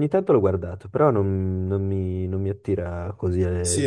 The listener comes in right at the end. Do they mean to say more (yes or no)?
yes